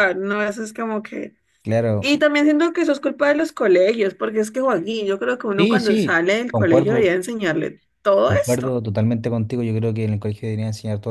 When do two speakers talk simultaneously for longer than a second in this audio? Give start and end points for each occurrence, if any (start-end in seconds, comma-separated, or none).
5.5-7.2